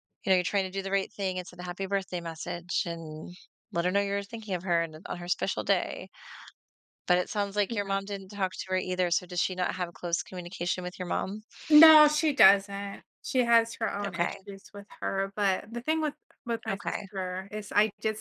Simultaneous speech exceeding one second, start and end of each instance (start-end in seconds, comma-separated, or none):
none